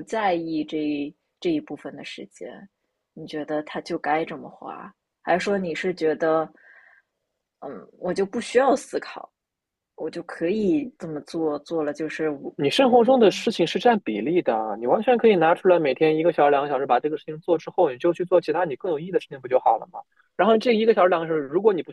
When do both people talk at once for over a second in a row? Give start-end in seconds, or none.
none